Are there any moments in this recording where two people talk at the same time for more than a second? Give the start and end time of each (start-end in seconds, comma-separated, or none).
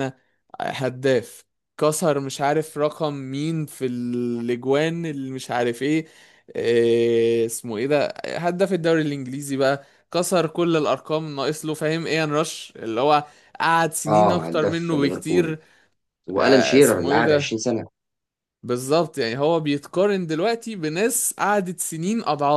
14.1-15.6, 16.4-17.6